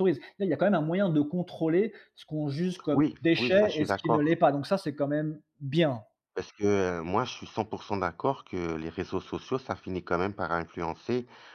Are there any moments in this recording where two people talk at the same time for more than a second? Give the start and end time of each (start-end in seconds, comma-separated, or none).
2.9-4.4